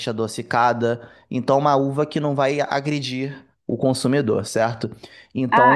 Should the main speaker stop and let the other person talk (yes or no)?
yes